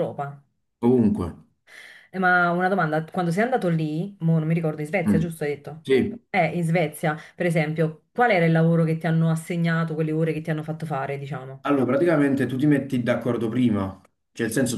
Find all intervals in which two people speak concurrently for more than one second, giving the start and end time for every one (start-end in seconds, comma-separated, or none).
none